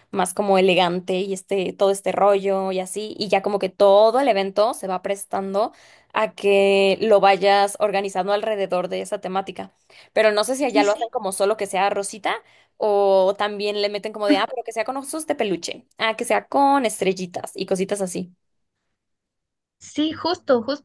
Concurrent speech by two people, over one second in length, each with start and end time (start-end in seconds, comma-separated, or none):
none